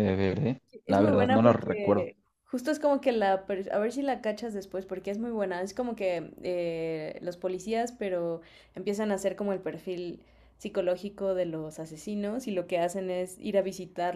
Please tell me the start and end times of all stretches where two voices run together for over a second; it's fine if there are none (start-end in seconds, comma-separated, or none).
0.9-2.1